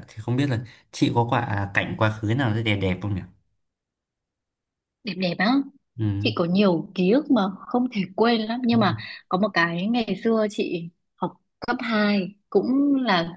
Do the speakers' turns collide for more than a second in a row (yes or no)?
no